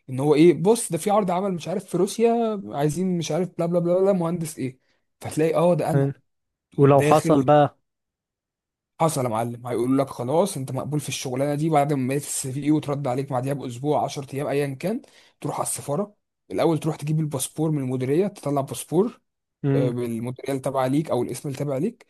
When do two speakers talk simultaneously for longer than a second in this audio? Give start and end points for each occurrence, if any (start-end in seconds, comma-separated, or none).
none